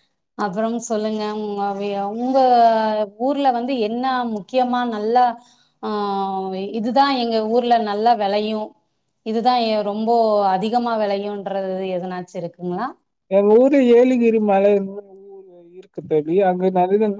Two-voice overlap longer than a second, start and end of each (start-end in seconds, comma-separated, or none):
none